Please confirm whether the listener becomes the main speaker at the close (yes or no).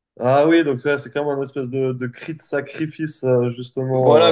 yes